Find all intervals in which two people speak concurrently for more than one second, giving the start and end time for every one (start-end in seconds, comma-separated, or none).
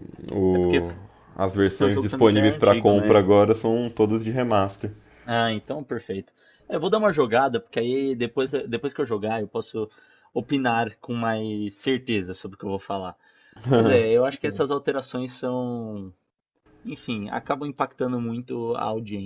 1.7-3.2